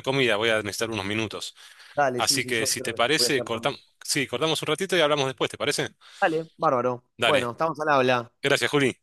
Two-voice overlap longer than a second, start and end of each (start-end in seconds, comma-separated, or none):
2.2-3.7